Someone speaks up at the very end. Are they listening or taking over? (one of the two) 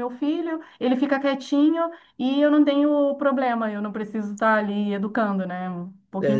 taking over